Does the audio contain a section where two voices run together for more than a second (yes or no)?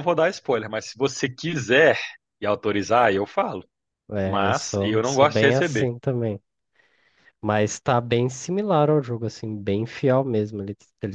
yes